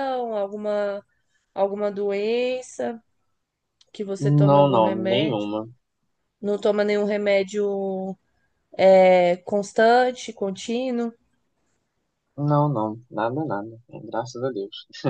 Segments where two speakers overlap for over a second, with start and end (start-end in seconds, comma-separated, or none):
4.2-5.5